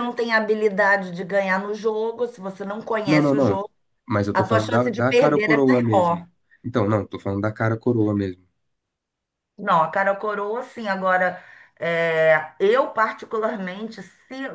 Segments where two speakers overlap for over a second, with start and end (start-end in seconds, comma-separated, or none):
4.3-6.2